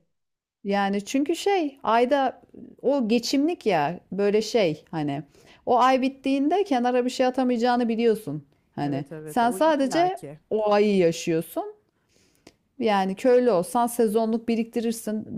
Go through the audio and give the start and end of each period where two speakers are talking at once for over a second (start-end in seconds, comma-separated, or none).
8.8-10.4